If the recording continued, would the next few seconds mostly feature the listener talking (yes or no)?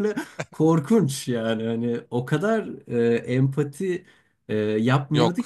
no